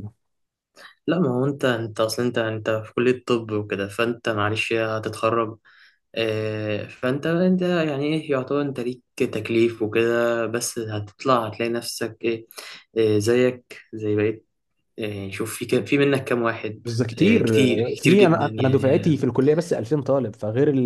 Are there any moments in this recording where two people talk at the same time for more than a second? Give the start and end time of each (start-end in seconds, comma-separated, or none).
16.8-19.1